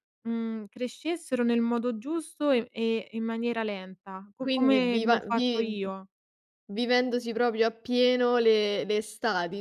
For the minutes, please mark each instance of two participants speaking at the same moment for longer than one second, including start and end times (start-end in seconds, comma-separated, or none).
4.4-5.8